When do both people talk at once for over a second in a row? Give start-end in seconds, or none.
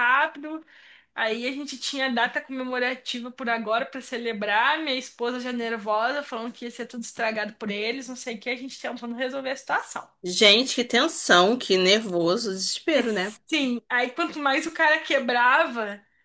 none